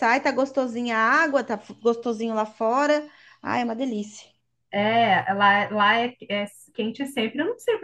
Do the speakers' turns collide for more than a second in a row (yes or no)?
no